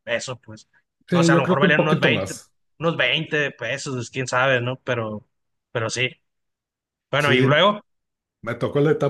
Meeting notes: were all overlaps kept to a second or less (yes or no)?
no